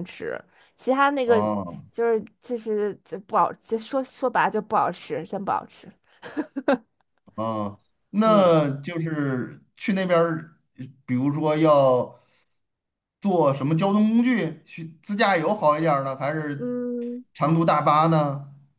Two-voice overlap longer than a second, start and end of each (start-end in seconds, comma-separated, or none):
none